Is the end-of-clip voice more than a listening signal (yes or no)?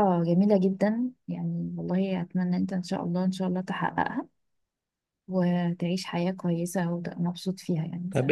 yes